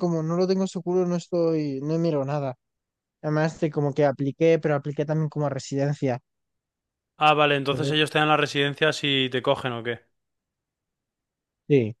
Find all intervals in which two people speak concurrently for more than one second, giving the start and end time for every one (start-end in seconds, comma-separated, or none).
none